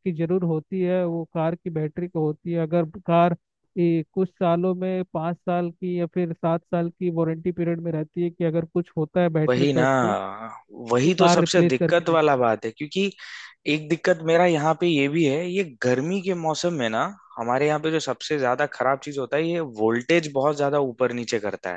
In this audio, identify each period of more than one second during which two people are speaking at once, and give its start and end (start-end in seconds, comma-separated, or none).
11.0-12.5